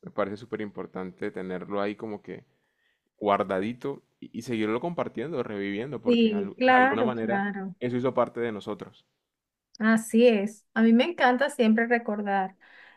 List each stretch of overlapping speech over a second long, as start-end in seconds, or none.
6.0-7.4